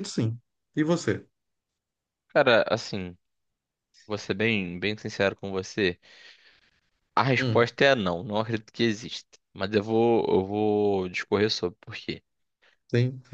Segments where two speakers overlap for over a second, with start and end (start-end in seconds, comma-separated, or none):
none